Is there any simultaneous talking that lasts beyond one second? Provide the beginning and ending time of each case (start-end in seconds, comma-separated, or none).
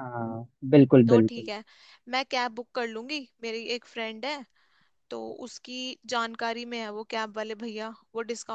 none